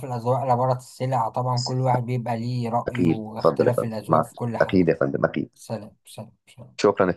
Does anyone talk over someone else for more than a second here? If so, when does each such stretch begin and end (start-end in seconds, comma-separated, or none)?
2.9-4.9